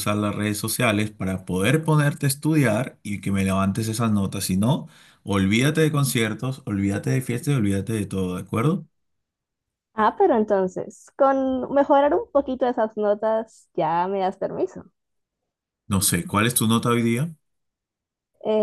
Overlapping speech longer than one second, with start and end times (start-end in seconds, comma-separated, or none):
none